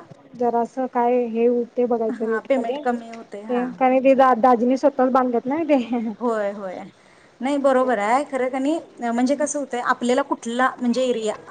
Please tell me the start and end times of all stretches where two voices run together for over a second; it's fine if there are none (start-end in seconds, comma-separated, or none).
2.2-3.7